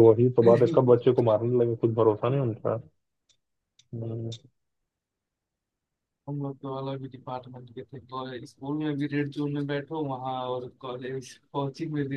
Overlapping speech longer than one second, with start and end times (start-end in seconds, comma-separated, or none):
none